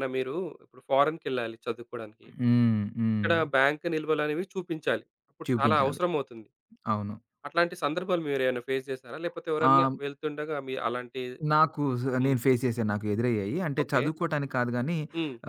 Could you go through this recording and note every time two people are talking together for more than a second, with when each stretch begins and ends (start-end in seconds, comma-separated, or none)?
none